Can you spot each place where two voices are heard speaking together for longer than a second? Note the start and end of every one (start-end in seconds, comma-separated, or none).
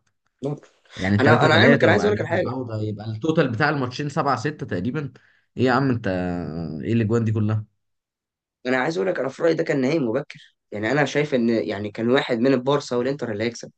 1.2-2.5